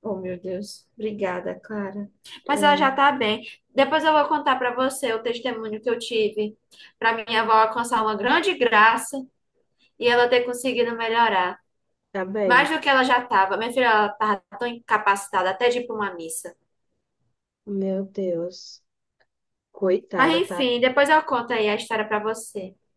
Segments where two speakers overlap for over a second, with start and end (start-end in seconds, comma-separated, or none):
none